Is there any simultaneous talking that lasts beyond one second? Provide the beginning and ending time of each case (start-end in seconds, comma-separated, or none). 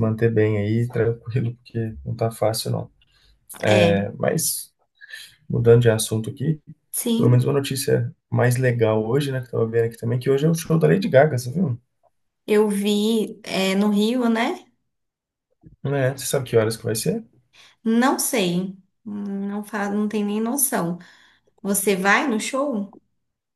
none